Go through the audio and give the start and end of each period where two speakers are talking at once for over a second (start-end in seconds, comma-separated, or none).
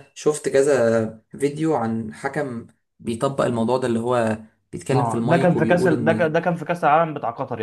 4.9-6.3